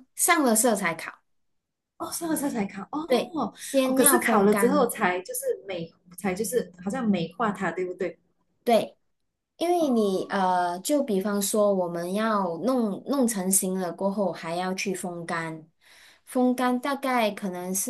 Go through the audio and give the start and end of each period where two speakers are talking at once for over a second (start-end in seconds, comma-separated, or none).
3.1-4.9